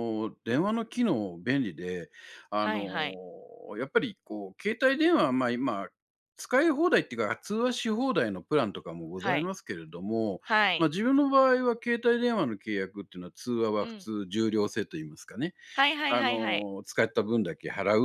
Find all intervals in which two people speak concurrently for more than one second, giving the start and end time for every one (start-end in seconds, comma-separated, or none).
none